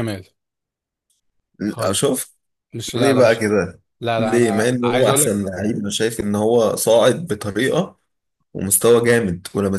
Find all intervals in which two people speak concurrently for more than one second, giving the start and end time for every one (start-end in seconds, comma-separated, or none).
4.2-5.5